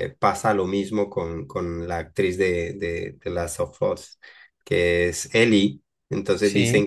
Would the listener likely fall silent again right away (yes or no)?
yes